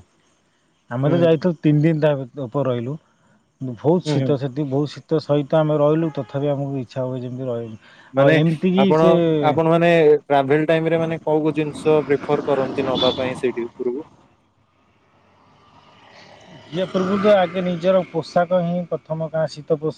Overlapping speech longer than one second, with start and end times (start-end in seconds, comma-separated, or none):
none